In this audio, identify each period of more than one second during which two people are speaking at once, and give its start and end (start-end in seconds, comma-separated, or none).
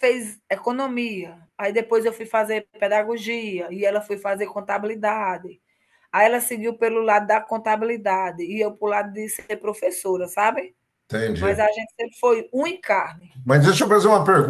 none